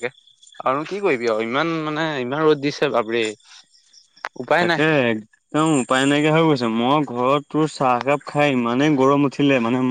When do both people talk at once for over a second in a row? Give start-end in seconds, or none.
none